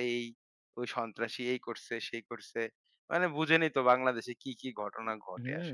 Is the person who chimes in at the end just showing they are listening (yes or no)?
no